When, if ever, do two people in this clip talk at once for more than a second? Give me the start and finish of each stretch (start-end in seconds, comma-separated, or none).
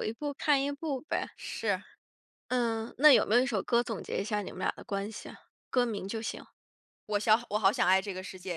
none